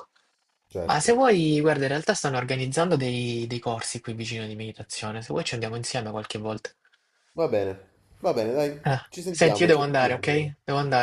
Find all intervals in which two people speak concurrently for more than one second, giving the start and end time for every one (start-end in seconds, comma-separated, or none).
8.8-10.5